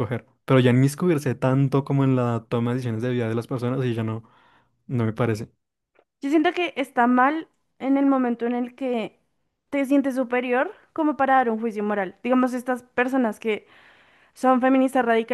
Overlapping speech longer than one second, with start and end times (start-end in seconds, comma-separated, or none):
none